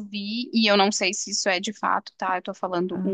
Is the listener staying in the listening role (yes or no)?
yes